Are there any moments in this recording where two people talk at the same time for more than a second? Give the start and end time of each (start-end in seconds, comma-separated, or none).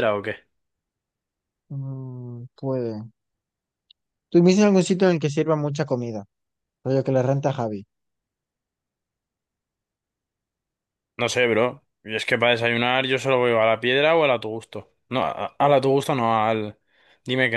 none